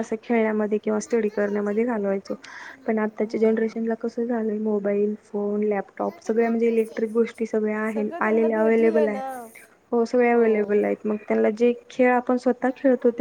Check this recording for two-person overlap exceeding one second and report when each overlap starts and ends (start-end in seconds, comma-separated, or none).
7.9-9.2